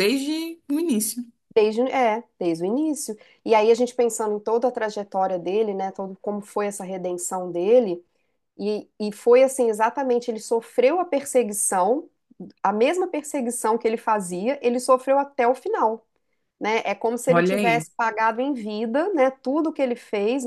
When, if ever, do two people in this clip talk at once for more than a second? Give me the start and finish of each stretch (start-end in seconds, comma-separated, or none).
none